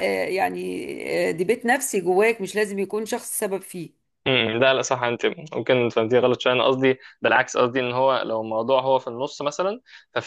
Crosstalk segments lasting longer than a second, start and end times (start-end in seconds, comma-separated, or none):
none